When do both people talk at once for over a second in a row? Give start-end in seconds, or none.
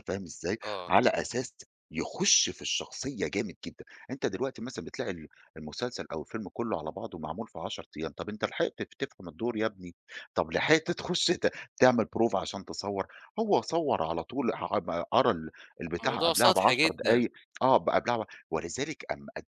16.0-17.2